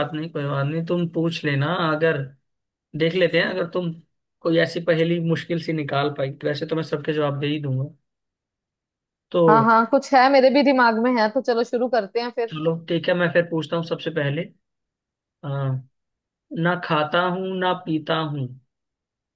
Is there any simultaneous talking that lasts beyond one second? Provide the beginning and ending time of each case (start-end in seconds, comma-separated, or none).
none